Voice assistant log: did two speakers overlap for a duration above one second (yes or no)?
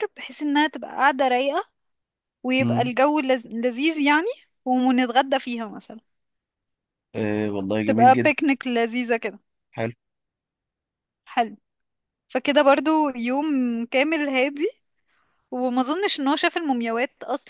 no